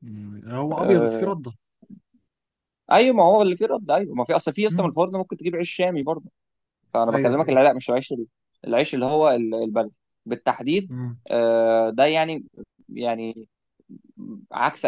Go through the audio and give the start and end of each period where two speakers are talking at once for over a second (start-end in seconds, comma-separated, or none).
none